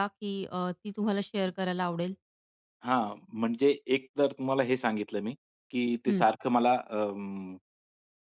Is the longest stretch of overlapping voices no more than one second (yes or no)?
yes